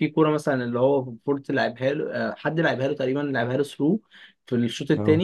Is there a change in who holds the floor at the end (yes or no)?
no